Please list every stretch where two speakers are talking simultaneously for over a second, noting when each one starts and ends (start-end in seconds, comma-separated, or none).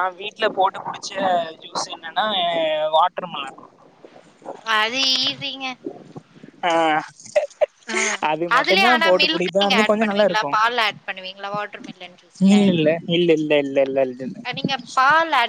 8.6-10.5